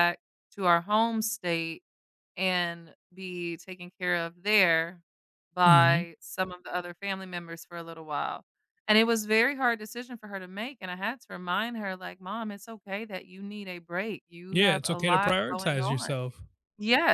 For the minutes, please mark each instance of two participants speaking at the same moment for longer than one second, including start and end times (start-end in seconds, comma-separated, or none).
14.5-16.1